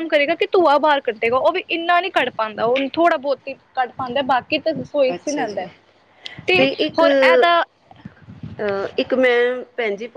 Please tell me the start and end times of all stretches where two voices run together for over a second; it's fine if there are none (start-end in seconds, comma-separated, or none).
none